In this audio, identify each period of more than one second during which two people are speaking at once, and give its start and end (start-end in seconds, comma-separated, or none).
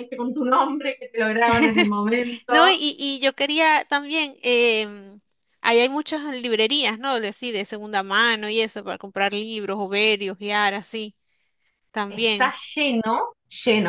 none